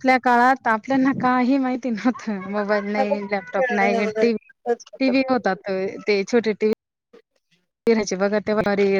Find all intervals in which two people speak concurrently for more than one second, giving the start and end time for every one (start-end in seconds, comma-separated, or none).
2.6-4.2